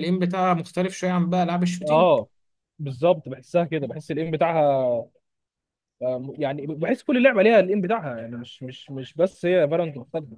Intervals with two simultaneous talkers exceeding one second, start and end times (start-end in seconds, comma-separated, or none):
none